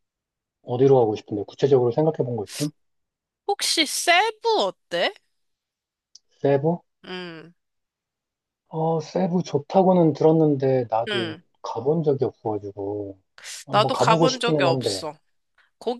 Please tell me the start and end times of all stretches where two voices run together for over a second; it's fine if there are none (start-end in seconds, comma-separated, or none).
13.7-15.1